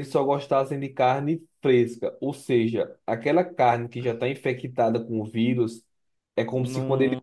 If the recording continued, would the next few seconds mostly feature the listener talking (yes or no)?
no